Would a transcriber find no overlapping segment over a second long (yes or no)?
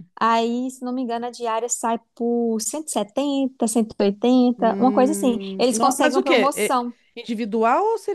no